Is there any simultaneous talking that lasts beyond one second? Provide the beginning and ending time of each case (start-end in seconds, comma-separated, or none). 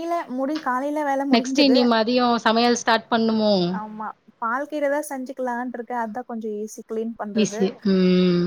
none